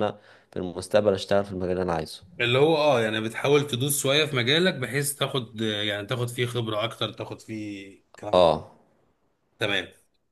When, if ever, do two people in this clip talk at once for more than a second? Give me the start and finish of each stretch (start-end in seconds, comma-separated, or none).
none